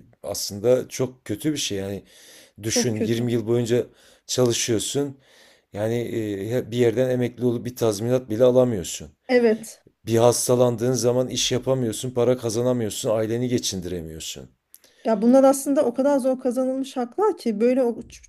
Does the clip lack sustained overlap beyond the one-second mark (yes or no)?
yes